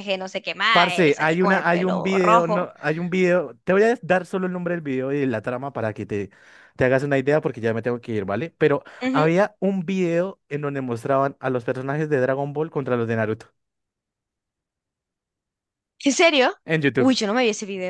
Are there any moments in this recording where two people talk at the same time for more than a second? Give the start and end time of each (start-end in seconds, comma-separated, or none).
0.7-2.7